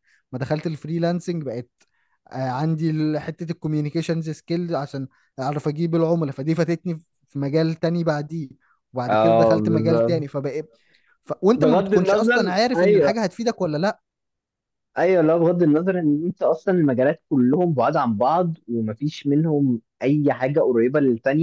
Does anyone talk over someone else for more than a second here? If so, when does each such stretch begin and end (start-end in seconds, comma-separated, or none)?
9.1-10.3, 11.5-13.2